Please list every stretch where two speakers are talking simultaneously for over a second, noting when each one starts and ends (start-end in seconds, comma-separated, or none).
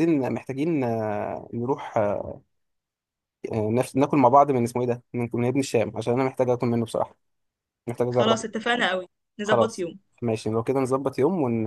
none